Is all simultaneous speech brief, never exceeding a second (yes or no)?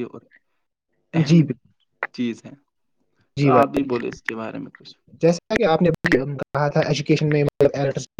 yes